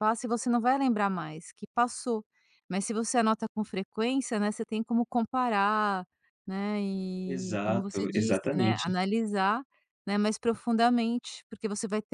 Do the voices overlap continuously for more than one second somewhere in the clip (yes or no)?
yes